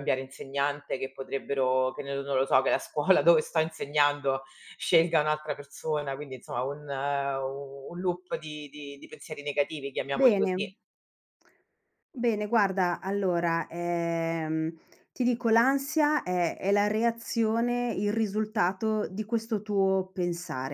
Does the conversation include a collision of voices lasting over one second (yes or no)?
no